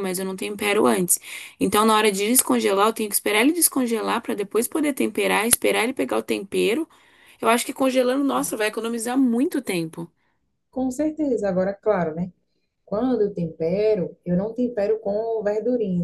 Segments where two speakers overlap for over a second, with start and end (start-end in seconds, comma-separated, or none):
none